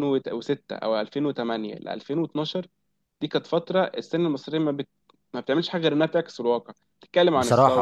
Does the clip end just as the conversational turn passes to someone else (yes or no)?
no